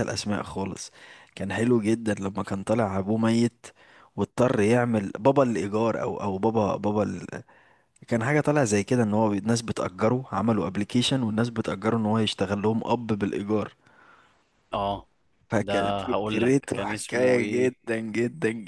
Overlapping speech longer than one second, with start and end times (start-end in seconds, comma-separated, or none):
15.6-17.7